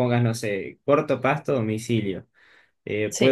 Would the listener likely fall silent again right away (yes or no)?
yes